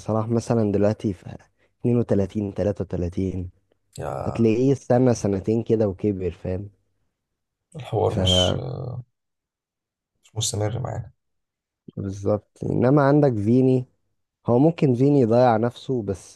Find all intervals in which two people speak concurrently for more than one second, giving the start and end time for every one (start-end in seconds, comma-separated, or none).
none